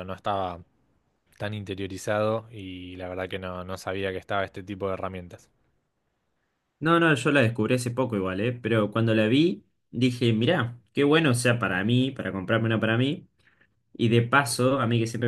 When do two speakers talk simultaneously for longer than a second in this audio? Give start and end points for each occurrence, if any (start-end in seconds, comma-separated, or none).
none